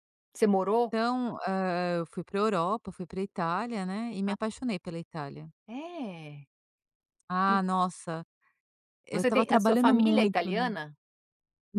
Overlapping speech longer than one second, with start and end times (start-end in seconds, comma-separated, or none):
9.1-10.7